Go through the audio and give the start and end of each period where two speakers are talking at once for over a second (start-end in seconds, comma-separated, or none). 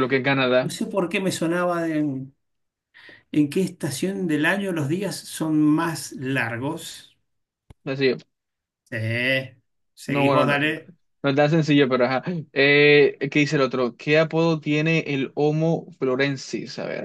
none